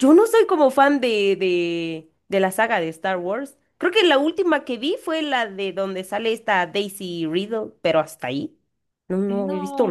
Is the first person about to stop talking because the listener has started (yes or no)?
yes